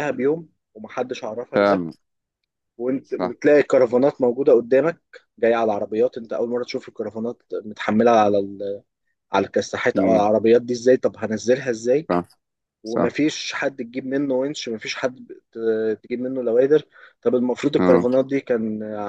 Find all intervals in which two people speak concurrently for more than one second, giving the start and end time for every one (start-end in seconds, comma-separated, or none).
none